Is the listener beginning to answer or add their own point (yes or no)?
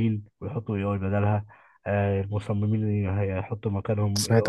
yes